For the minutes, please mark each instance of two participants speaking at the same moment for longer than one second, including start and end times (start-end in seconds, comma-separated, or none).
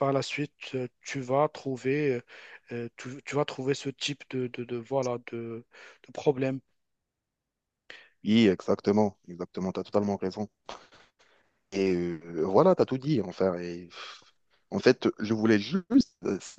none